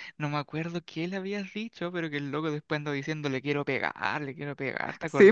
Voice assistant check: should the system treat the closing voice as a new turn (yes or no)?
yes